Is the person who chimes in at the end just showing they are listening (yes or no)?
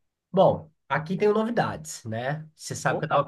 yes